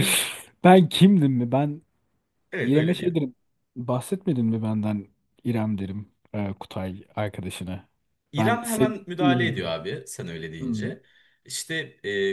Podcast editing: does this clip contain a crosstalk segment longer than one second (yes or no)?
yes